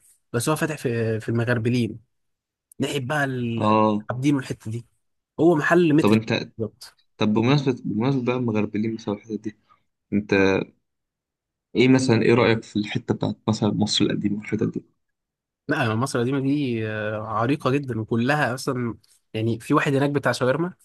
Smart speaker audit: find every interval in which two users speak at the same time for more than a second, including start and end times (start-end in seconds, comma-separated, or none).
none